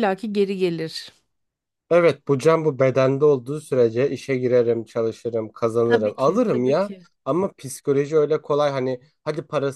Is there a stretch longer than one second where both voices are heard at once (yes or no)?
yes